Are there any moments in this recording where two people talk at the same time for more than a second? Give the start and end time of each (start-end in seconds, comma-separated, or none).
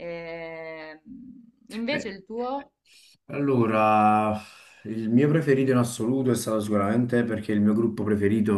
none